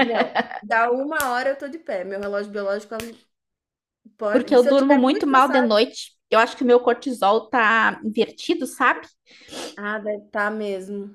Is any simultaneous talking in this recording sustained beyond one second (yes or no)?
yes